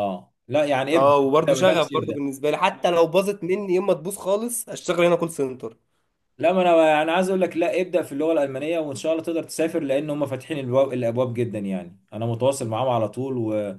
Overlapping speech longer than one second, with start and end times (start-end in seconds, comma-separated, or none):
0.9-2.2